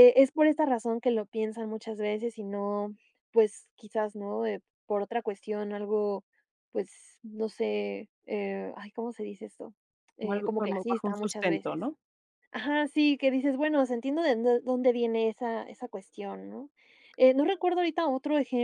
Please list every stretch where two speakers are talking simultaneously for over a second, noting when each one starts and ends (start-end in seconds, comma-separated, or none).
10.2-11.8